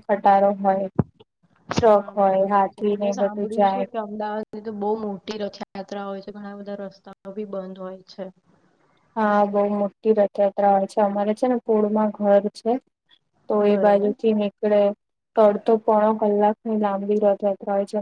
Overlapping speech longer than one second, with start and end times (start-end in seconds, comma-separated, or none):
1.9-3.9